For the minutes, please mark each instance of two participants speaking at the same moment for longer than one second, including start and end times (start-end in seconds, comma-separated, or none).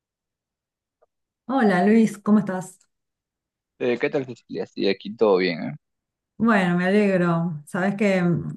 none